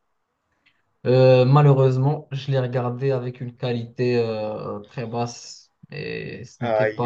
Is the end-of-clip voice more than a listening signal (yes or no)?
yes